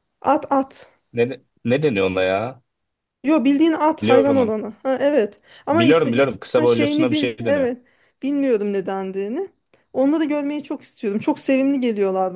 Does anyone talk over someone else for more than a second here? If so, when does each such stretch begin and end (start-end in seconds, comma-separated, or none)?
5.7-7.7